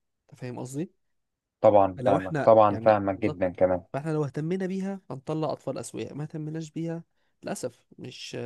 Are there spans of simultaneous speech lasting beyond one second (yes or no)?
yes